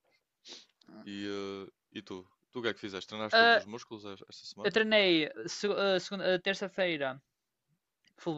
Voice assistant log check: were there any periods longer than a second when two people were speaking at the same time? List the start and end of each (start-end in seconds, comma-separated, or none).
none